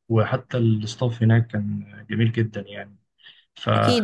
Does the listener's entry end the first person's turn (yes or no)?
yes